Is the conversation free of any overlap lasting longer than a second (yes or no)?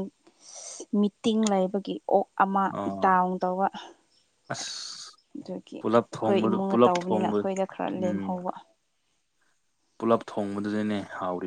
no